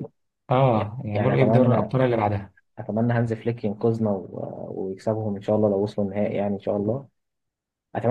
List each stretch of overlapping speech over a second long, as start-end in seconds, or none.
0.7-1.9